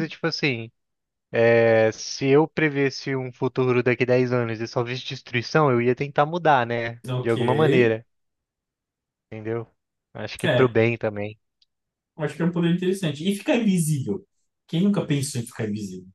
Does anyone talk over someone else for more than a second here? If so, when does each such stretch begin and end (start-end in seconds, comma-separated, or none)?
none